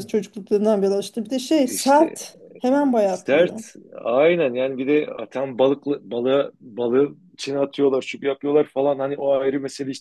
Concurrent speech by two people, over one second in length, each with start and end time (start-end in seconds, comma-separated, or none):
none